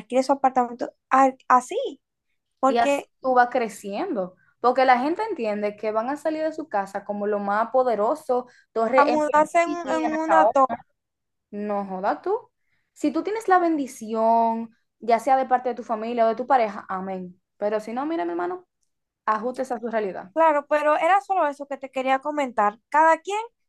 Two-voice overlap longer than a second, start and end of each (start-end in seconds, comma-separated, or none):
8.9-10.6